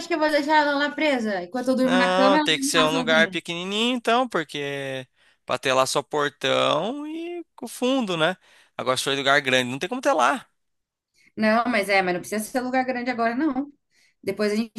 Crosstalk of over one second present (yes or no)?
yes